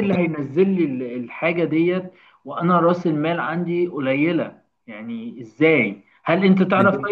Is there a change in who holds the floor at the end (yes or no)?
no